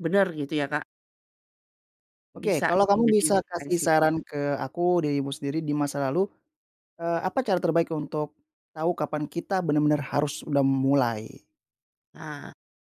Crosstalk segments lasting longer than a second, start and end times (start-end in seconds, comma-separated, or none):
2.4-3.9